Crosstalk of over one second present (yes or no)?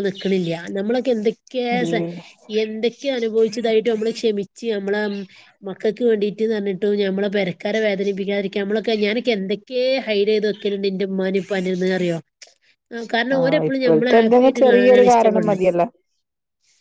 yes